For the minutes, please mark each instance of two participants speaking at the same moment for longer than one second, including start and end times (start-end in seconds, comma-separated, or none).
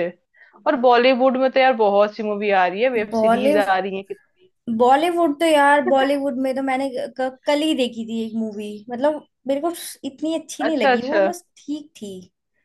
none